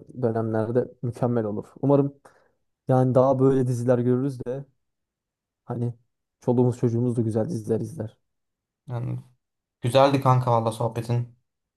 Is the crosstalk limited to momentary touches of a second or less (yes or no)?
yes